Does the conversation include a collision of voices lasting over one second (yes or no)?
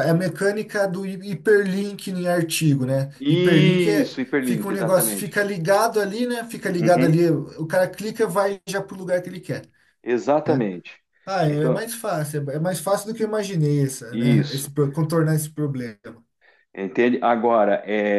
yes